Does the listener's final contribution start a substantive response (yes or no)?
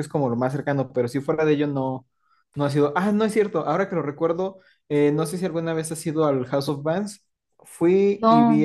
no